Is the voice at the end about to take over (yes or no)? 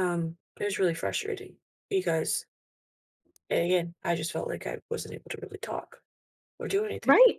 yes